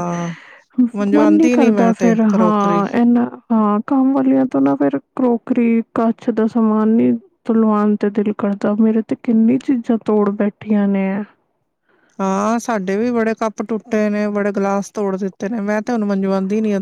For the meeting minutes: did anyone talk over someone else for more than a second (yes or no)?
yes